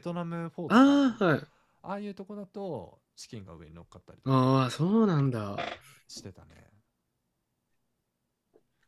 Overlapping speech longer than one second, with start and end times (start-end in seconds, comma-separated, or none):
none